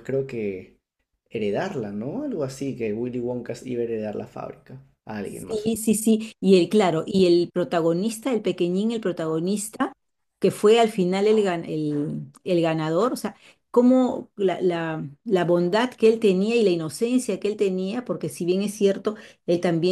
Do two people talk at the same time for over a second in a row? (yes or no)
no